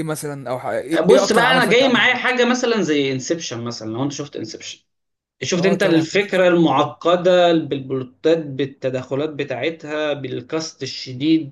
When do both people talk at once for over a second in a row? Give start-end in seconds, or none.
1.1-2.4, 5.6-6.9